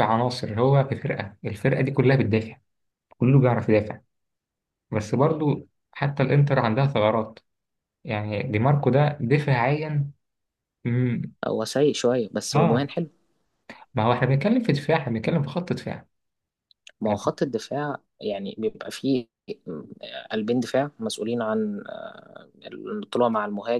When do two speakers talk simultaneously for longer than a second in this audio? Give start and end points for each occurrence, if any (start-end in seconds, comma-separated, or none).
none